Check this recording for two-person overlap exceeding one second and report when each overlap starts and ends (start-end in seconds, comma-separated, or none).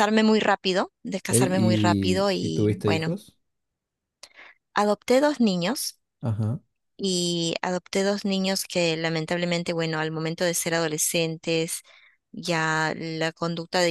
1.3-3.1